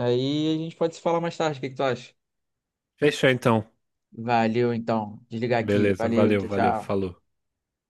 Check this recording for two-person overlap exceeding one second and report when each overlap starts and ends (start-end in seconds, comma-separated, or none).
5.6-7.0